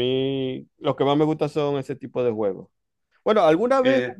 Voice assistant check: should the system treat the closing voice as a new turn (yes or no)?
no